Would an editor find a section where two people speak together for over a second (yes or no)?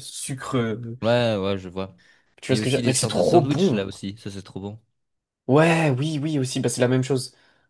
yes